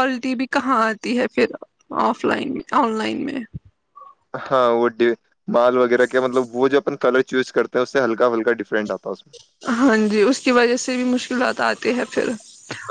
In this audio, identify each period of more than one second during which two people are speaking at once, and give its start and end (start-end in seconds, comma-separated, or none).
none